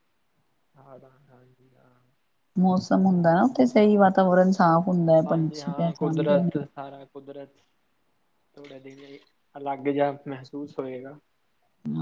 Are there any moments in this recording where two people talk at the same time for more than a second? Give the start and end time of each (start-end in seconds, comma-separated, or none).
5.3-6.5